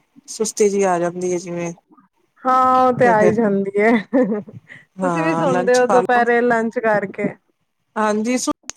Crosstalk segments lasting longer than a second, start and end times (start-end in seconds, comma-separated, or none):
5.0-6.2